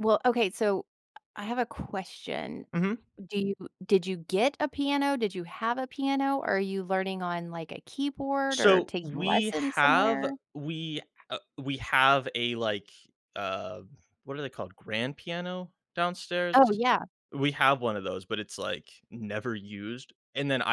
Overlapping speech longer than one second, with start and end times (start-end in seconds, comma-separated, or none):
8.5-10.3